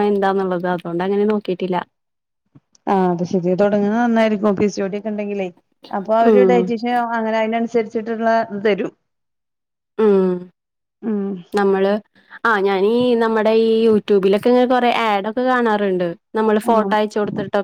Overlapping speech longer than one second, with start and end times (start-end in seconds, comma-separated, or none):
none